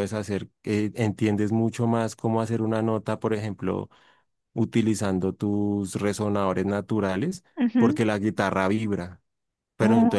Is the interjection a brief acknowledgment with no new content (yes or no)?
yes